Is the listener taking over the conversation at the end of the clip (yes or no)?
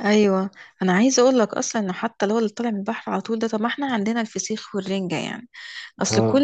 no